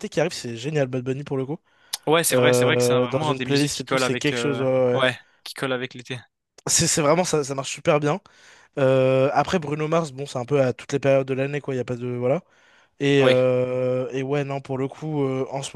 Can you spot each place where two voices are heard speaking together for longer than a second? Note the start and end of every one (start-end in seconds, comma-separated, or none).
2.3-5.0